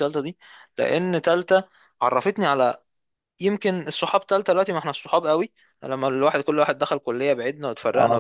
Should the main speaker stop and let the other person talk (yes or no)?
yes